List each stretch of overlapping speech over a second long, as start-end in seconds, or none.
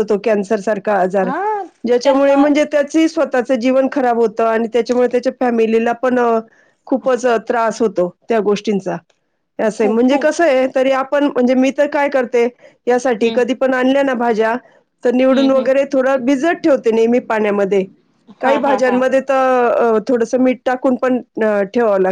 none